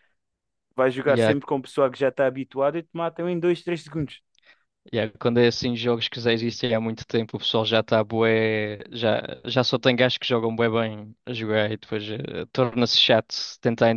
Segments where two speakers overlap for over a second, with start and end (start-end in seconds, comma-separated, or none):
none